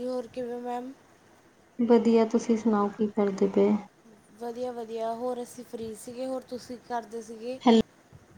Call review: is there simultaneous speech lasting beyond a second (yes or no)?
no